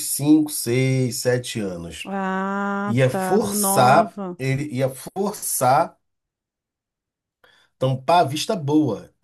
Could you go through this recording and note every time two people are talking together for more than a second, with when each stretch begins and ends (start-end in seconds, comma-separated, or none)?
2.8-4.4